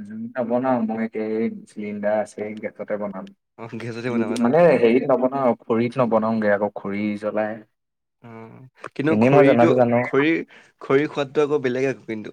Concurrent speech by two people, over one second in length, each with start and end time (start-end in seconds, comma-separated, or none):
none